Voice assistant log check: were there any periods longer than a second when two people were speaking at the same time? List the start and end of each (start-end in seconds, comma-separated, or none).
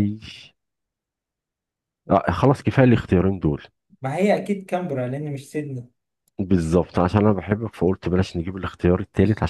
none